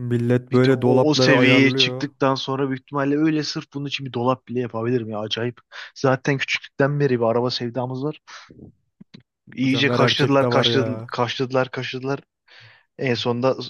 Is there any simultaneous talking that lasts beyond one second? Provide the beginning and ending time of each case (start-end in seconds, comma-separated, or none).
0.5-2.1, 9.6-11.1